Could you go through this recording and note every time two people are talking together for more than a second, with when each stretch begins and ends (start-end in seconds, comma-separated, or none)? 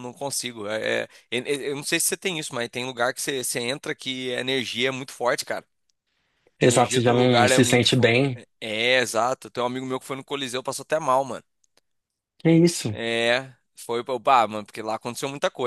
6.6-8.4